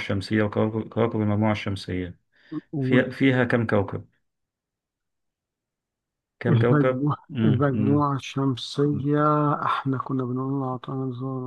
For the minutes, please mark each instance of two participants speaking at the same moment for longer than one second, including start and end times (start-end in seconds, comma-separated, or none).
6.5-8.0